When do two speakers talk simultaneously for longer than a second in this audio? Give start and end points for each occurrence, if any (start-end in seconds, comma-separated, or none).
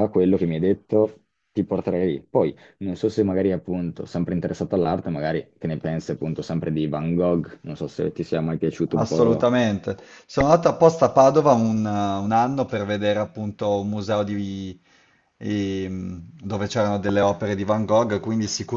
none